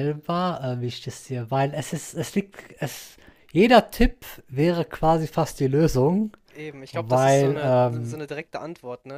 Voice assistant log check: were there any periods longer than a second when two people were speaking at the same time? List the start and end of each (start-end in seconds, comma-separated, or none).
6.9-8.2